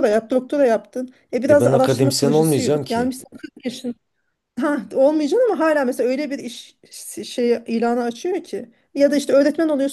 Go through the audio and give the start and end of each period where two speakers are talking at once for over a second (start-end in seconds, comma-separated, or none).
1.5-3.1